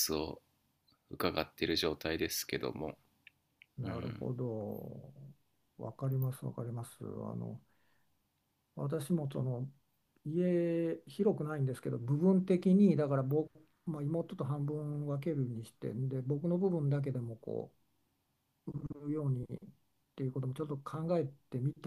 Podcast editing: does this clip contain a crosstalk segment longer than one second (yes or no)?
no